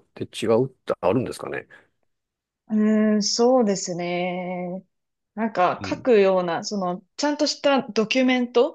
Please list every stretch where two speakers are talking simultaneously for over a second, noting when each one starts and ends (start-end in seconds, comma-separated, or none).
none